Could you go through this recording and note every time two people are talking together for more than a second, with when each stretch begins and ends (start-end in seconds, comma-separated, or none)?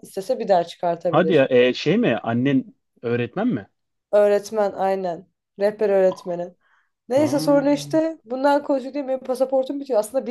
none